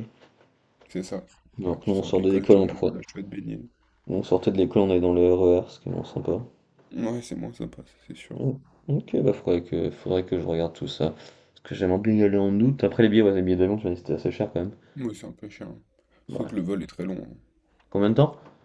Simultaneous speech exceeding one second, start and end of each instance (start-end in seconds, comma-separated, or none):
1.6-2.9